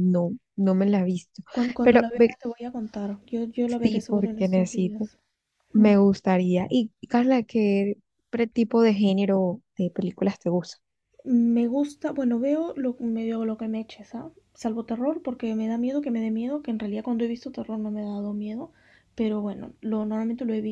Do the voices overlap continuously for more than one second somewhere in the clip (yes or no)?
yes